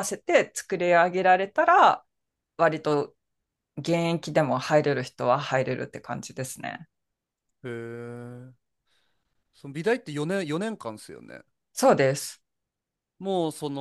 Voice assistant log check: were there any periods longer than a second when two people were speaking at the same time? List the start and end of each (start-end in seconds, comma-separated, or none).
none